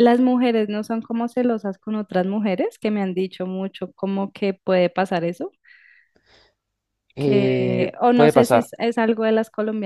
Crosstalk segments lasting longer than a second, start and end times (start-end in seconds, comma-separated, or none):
7.2-8.7